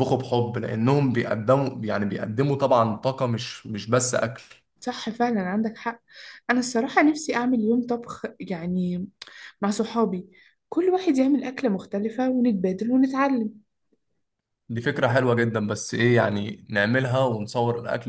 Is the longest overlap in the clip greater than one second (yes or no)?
no